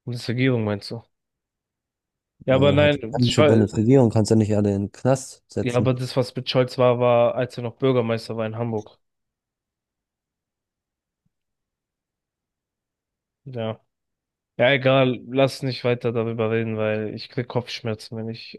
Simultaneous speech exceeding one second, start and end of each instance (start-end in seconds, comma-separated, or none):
2.5-3.7